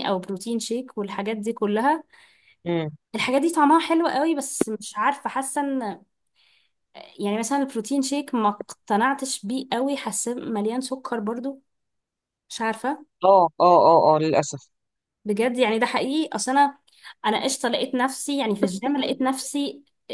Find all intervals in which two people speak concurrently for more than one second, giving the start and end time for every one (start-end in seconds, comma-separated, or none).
none